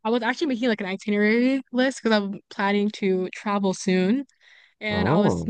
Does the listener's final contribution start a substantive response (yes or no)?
no